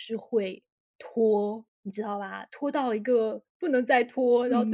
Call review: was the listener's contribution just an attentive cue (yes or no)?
yes